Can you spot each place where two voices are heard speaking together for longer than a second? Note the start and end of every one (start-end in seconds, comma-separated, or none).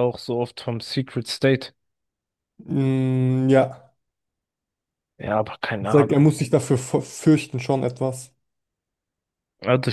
none